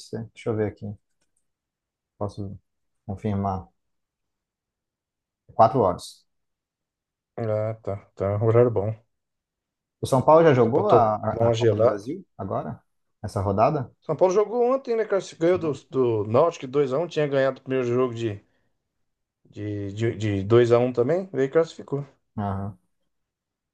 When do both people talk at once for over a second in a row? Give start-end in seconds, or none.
10.6-12.0